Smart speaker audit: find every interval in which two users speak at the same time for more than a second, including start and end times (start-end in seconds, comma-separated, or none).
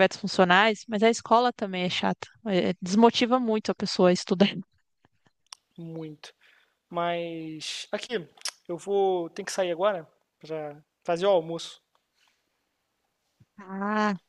none